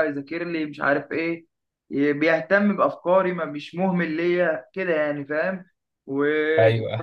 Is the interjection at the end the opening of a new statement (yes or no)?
no